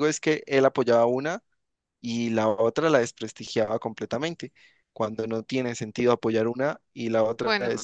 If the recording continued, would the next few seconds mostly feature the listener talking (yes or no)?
no